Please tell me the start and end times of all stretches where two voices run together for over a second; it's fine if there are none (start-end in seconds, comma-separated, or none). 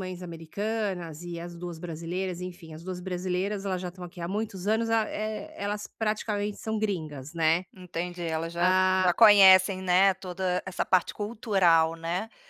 none